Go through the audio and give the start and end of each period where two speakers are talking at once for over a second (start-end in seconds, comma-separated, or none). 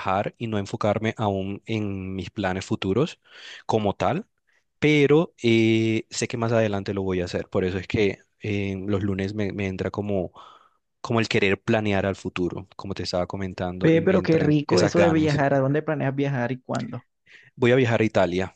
13.8-15.3